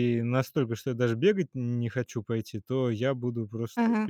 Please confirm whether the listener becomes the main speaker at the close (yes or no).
no